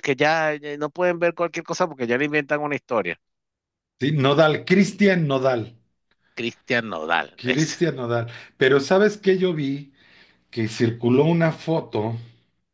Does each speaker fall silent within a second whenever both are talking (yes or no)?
yes